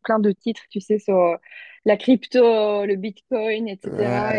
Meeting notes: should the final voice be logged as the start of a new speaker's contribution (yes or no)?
no